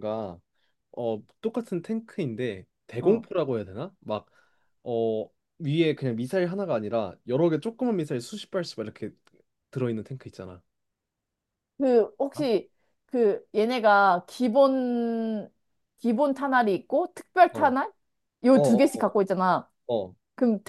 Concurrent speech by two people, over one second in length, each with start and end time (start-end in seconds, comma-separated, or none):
none